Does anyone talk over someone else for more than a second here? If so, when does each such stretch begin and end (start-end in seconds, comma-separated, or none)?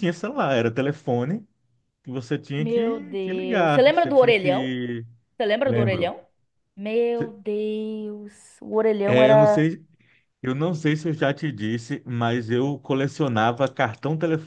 2.6-4.7